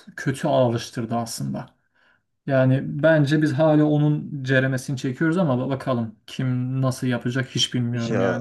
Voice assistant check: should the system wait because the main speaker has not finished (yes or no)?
no